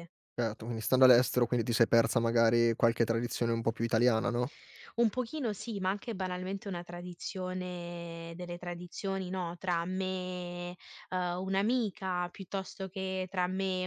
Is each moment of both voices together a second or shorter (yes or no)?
yes